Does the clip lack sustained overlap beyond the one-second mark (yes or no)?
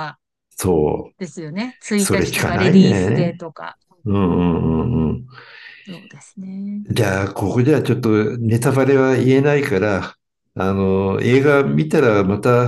no